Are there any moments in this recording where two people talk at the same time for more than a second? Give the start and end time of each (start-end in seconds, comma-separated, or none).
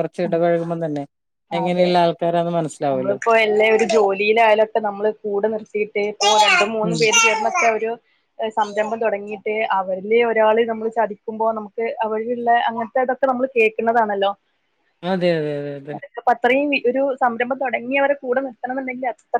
none